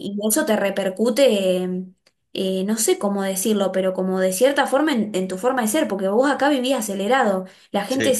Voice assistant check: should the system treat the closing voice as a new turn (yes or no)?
no